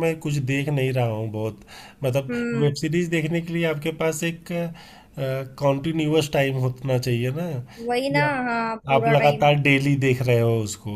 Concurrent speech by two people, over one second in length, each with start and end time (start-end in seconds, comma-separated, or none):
7.9-9.5